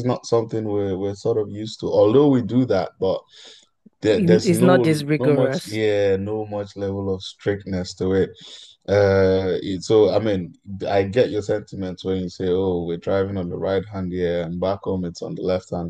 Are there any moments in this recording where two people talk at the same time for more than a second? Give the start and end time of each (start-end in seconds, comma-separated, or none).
4.2-5.8